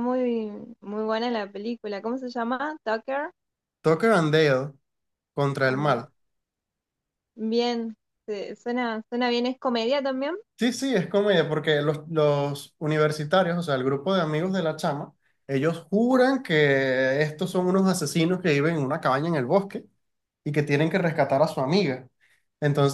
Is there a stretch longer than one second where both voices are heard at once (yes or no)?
no